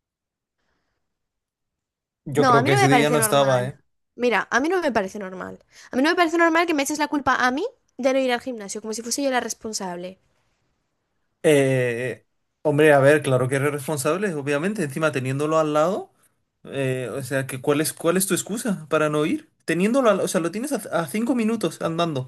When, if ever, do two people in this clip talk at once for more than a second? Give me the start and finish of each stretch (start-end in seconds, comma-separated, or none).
2.4-3.6